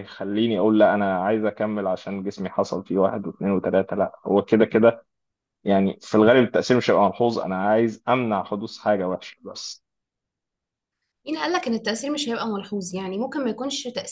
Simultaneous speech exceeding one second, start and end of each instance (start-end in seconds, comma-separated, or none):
none